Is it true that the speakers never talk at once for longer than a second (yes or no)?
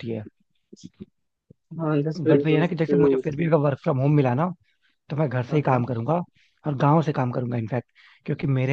no